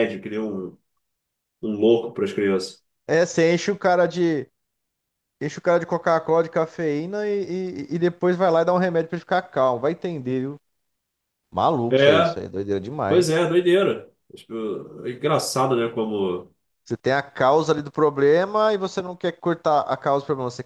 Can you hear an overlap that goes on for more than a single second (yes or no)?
no